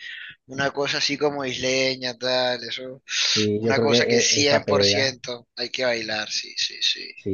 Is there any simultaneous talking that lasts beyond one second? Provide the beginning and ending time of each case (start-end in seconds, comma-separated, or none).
3.6-5.2